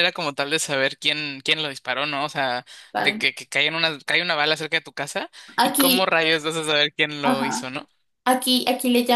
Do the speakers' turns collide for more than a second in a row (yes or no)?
no